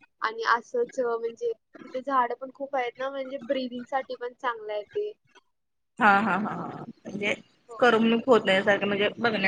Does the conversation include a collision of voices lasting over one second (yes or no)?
no